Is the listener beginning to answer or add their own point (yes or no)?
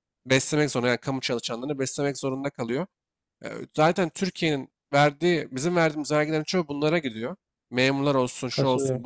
no